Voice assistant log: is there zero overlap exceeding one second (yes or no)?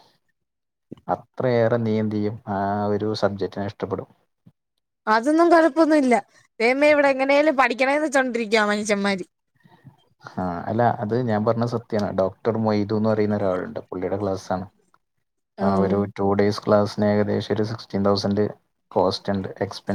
yes